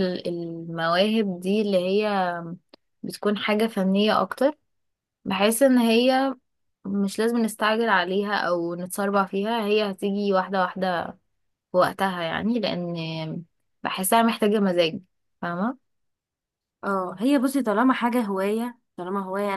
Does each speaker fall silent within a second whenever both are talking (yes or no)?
yes